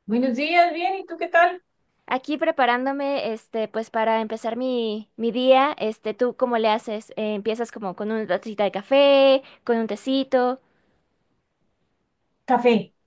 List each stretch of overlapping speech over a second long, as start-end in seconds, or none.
none